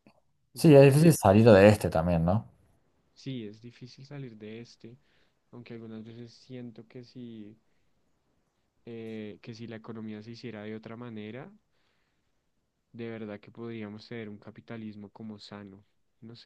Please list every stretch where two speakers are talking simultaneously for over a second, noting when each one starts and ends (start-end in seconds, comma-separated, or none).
none